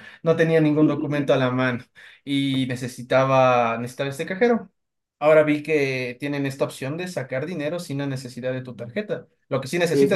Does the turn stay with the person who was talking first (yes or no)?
no